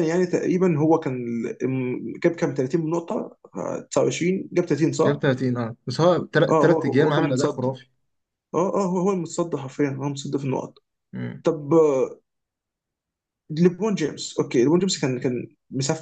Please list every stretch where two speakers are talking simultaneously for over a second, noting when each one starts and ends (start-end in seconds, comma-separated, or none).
6.5-7.8